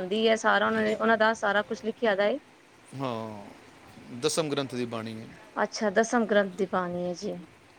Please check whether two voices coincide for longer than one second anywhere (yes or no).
no